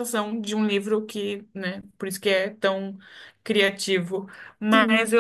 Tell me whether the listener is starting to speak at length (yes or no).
no